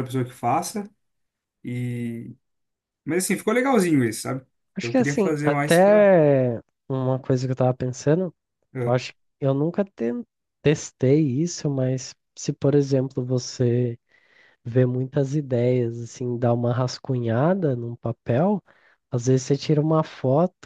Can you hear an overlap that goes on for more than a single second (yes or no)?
yes